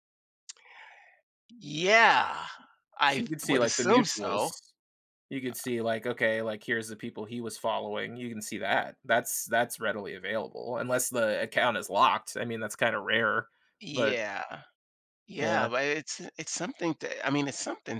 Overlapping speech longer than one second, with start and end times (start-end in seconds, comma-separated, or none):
3.0-4.5